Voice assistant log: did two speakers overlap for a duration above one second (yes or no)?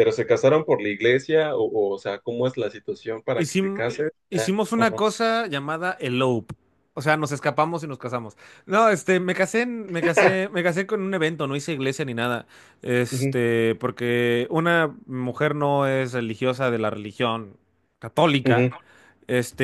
yes